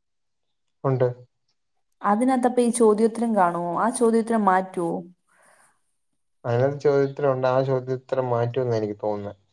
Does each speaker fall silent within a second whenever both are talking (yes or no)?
yes